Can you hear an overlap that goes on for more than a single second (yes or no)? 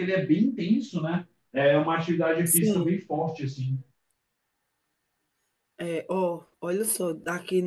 no